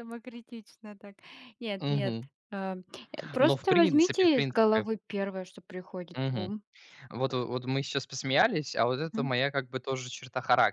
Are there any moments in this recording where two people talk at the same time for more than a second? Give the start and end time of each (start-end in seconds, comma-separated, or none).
3.4-4.9